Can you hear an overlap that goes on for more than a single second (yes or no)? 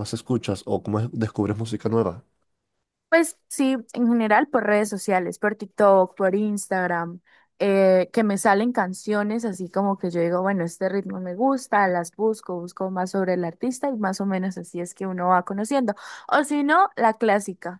no